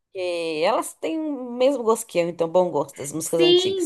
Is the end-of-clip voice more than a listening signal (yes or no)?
yes